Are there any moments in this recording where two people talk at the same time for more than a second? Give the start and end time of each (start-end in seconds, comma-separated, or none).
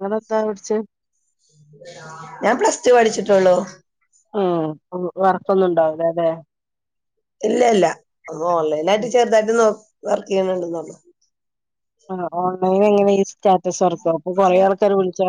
none